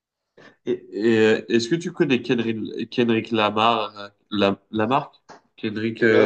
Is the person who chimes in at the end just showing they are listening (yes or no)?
no